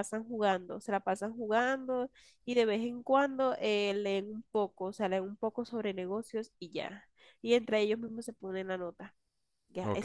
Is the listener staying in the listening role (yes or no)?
no